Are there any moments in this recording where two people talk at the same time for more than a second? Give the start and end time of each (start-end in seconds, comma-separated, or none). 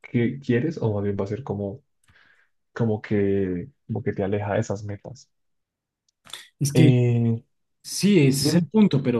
none